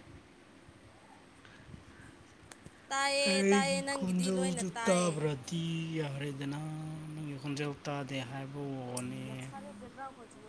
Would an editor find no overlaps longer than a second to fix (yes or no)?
no